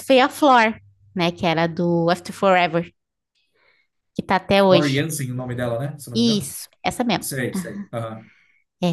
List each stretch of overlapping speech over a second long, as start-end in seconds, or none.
none